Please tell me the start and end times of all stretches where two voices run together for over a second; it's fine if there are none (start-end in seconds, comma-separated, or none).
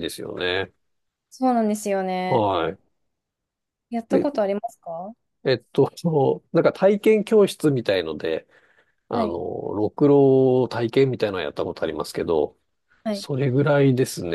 none